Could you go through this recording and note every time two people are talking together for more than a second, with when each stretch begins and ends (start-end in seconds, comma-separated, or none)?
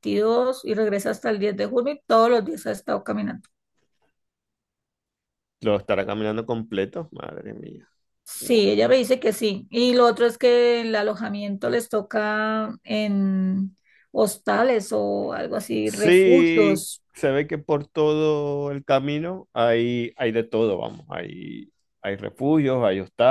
15.8-17.0